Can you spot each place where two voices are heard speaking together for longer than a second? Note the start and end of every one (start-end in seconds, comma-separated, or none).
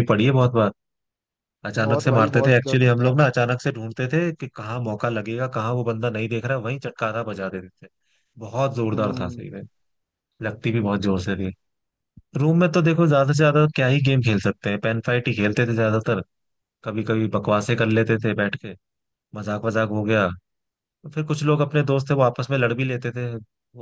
1.8-3.2